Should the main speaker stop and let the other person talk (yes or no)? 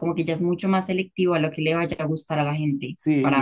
yes